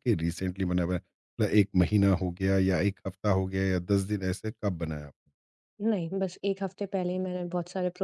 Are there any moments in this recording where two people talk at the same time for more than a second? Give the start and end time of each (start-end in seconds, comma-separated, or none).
none